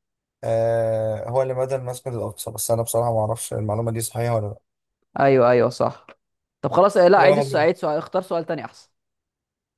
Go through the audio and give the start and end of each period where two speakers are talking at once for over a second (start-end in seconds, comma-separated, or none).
none